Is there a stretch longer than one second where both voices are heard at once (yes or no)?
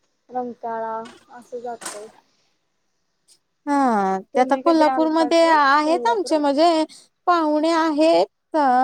yes